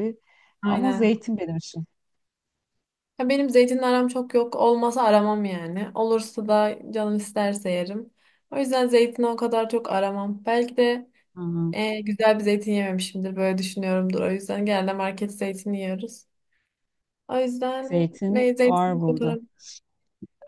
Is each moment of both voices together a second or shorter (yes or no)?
no